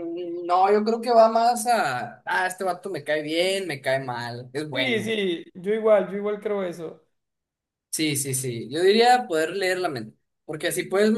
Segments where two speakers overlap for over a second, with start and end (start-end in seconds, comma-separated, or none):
none